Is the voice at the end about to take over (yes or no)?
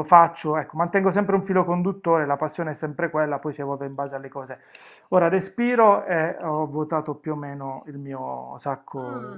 yes